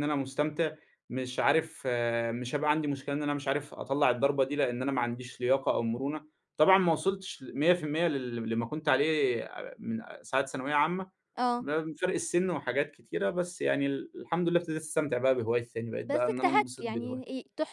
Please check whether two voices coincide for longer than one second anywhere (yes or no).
yes